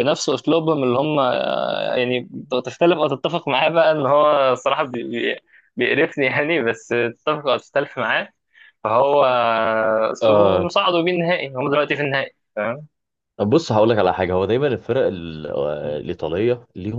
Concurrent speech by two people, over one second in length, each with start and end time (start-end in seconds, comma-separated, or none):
none